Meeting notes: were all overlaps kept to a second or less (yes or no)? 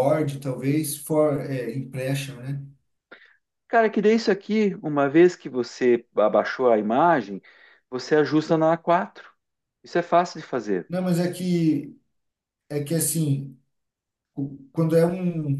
yes